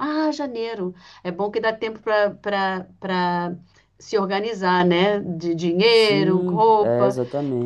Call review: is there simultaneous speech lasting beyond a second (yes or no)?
yes